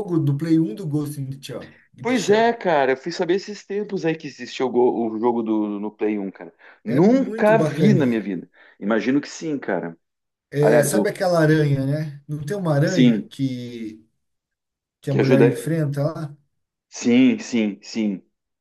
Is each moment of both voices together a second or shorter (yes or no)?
no